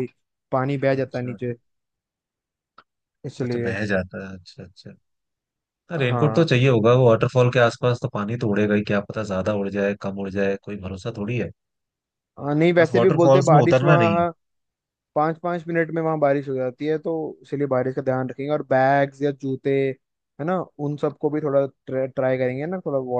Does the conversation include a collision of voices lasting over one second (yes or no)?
yes